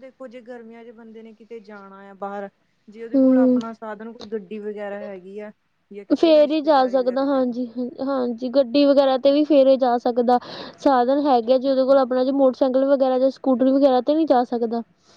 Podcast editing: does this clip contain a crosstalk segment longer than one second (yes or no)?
yes